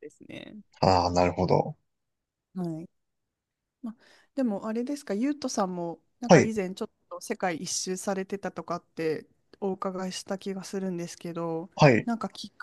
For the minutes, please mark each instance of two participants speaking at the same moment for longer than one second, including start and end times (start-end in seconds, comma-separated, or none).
none